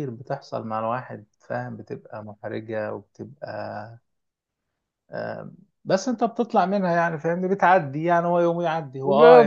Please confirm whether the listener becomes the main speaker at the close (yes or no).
yes